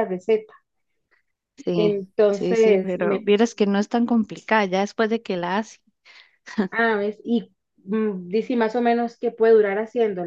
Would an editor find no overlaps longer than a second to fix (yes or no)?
no